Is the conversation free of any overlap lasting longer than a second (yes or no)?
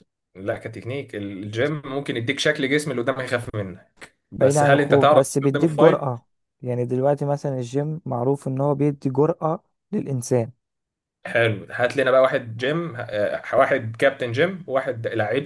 no